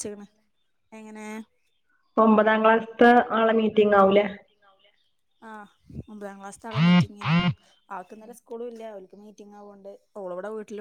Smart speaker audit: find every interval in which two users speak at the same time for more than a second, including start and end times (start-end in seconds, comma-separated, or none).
none